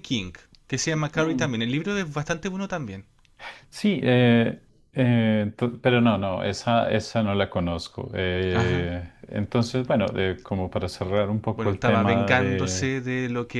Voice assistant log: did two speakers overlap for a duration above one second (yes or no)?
yes